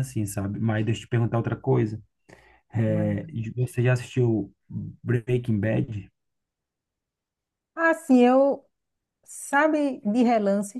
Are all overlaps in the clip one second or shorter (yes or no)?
yes